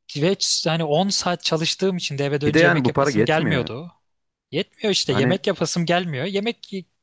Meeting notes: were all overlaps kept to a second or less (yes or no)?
no